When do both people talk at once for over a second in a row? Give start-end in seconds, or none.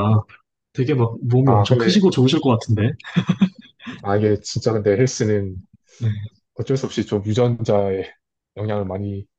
none